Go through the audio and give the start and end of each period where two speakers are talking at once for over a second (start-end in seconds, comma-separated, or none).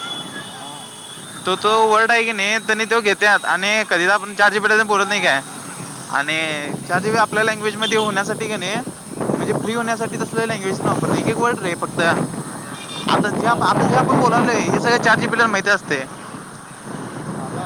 13.6-15.2